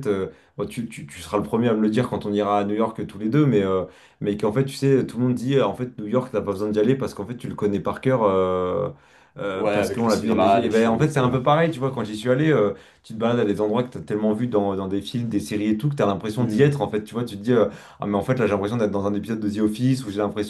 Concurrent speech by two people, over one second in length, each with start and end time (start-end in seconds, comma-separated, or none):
9.5-11.4